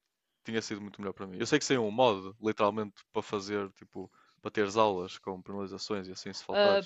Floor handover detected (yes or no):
yes